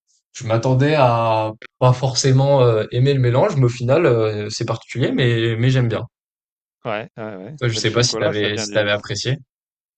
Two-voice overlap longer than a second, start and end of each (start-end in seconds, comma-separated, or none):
7.6-8.9